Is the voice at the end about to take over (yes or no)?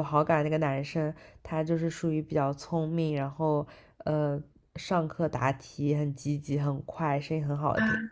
no